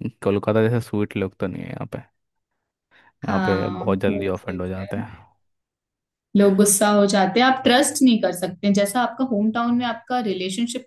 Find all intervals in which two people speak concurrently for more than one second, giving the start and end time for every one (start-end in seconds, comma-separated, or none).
3.3-4.9